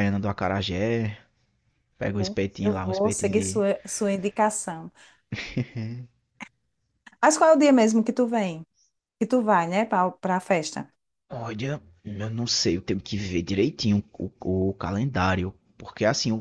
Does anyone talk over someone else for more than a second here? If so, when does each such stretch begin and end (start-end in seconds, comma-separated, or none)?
2.0-3.6